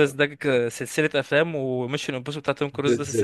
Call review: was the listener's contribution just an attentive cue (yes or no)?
no